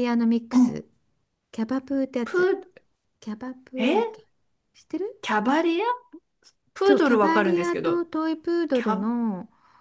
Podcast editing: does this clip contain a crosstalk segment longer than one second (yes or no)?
yes